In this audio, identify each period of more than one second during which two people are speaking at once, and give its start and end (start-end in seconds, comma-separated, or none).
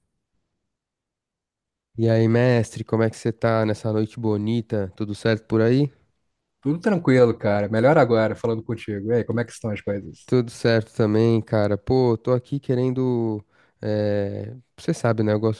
none